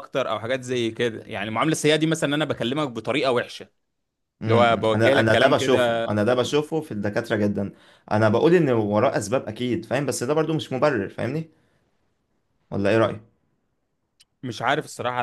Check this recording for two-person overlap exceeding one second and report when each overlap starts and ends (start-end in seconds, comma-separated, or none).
4.4-6.0